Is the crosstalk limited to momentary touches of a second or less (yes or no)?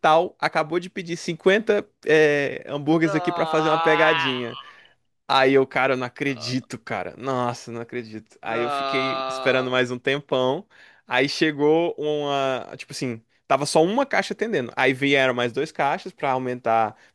no